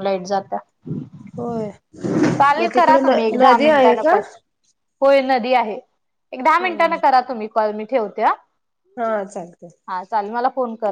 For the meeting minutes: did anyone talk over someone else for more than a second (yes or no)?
yes